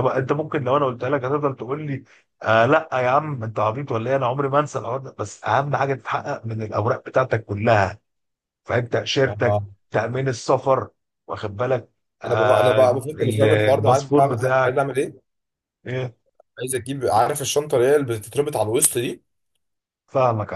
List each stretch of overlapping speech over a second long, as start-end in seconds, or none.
12.3-14.8